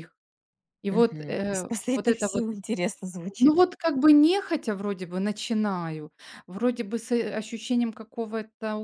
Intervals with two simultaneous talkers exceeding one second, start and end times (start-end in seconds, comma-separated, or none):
0.9-2.4